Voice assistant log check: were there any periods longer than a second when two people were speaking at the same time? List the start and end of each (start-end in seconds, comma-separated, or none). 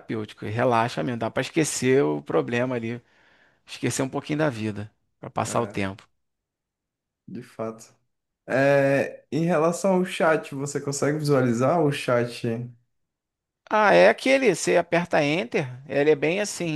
none